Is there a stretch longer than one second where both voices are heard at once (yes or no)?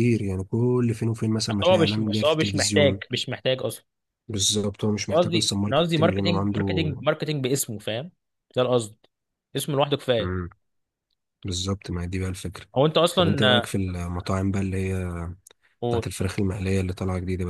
yes